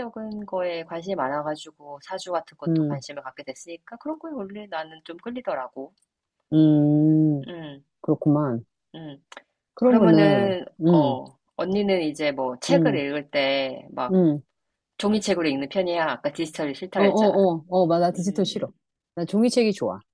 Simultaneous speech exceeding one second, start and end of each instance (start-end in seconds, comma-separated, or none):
9.8-11.2